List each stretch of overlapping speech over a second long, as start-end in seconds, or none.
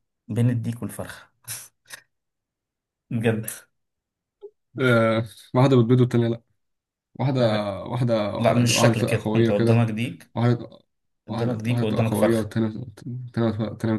8.4-9.9, 11.3-12.5